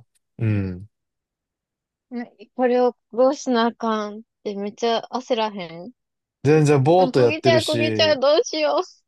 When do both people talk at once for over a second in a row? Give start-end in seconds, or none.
7.0-8.2